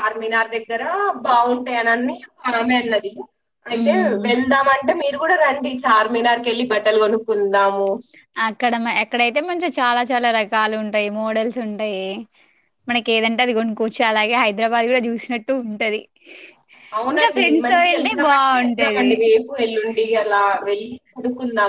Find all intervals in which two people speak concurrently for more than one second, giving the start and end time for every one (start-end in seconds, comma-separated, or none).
17.1-19.1